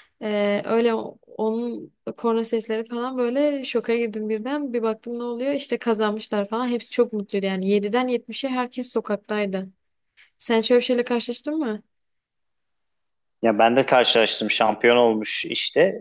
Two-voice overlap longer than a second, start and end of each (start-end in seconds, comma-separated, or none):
none